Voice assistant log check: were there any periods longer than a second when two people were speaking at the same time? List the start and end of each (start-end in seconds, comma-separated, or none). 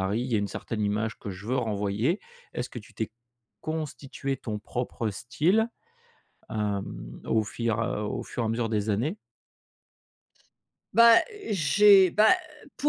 none